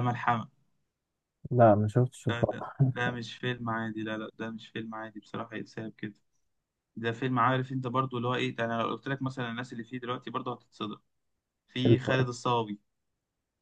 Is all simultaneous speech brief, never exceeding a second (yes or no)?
yes